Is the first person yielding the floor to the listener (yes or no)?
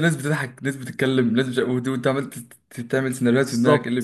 yes